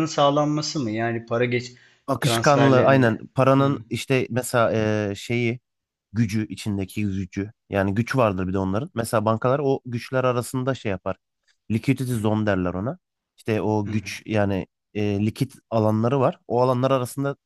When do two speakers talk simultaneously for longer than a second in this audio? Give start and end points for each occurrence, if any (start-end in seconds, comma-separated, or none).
2.2-3.8